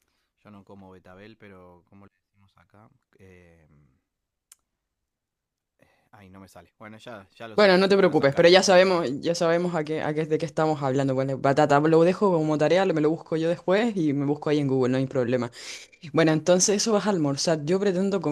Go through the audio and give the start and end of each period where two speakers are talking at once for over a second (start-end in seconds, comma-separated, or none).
7.5-9.2